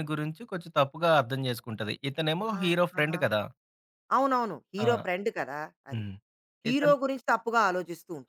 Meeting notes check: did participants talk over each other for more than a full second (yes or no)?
no